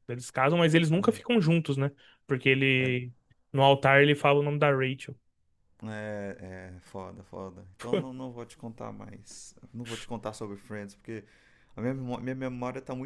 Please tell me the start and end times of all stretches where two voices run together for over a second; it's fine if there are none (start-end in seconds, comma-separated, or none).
none